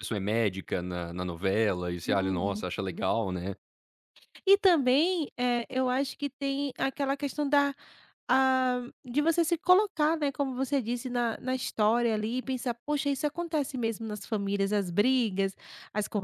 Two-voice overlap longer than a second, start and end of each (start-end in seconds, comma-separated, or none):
none